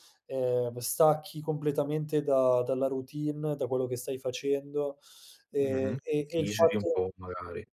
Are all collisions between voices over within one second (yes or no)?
no